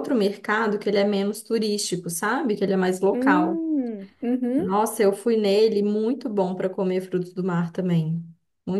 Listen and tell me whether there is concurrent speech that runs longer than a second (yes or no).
no